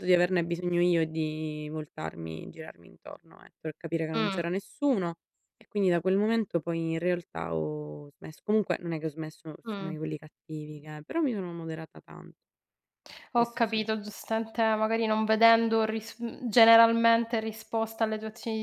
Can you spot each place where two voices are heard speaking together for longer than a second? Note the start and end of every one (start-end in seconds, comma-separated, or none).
none